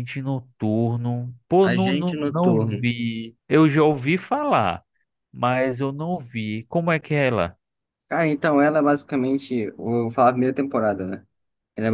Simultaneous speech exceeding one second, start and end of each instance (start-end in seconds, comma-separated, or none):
1.6-2.9